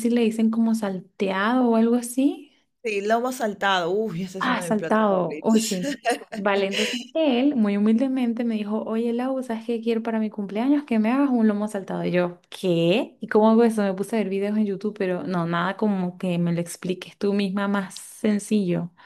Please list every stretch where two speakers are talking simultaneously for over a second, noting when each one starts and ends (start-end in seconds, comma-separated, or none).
4.4-5.8